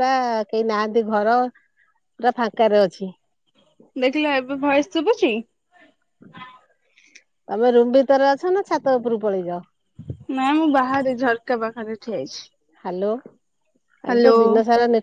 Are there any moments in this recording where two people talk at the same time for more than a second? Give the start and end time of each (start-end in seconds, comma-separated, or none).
none